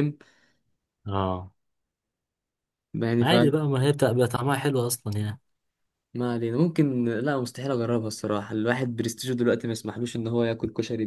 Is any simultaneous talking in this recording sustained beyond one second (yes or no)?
no